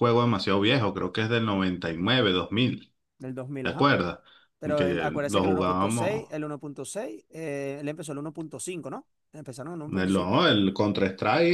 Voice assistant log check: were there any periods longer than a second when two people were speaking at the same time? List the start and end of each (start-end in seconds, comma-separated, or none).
4.8-6.3